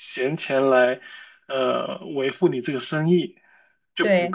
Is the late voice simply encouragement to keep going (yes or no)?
no